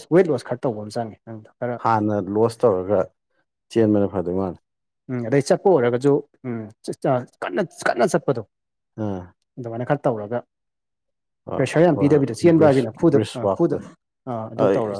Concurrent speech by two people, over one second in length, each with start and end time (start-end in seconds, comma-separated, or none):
11.6-13.8